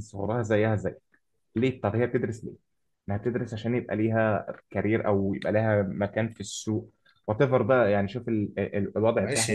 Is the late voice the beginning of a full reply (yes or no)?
yes